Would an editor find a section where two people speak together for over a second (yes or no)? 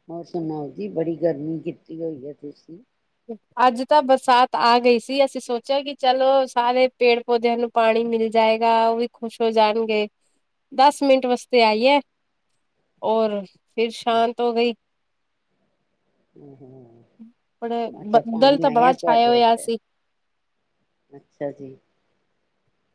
yes